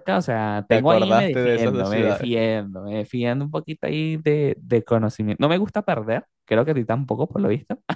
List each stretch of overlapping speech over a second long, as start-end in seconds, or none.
0.7-2.3